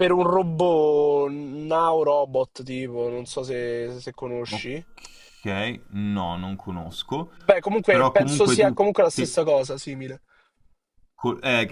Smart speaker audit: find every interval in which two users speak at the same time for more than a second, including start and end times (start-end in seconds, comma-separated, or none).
7.9-9.3